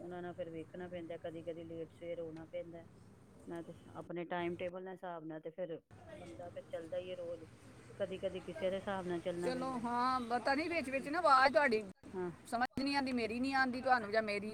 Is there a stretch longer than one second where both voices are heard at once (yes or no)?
no